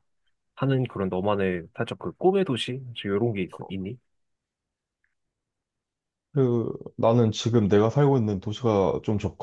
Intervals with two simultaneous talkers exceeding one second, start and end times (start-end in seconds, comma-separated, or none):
none